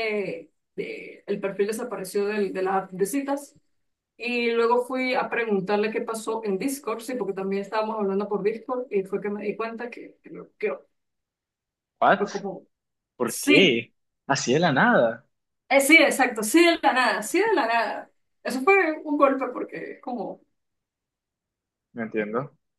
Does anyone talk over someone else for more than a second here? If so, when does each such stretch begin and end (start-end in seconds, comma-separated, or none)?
none